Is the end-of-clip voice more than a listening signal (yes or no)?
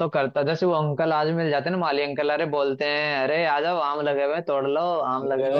no